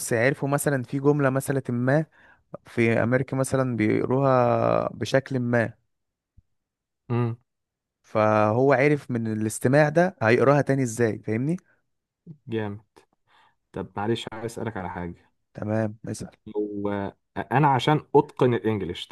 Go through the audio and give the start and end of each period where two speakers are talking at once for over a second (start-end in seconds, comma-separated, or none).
none